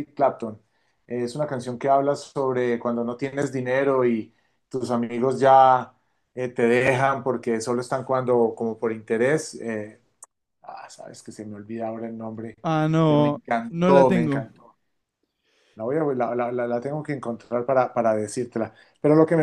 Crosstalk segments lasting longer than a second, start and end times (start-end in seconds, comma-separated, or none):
13.1-14.4